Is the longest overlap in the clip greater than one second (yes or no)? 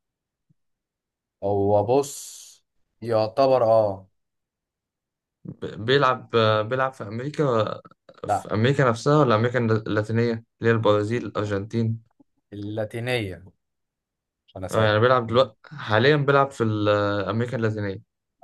no